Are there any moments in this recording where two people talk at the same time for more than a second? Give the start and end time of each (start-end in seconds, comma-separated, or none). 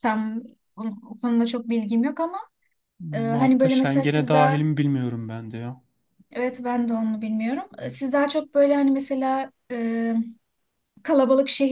3.3-4.6